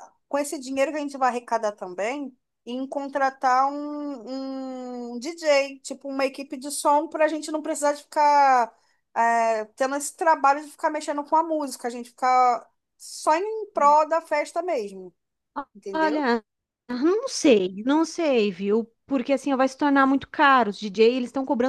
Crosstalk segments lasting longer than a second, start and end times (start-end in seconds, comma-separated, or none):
none